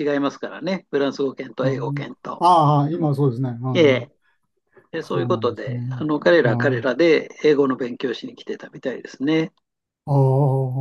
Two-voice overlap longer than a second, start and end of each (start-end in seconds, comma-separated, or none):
5.0-6.9